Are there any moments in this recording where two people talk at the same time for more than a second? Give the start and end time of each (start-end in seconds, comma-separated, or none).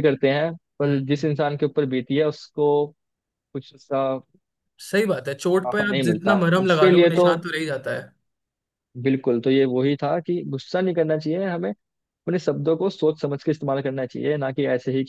5.6-7.3